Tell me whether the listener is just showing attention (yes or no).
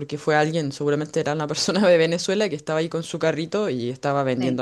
yes